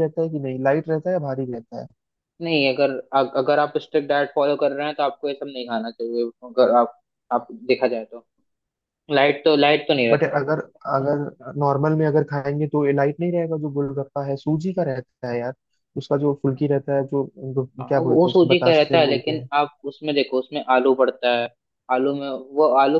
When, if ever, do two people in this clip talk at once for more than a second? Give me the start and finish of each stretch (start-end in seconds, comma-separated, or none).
17.8-19.5